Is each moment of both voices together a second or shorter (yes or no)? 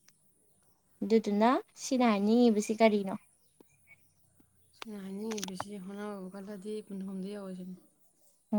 yes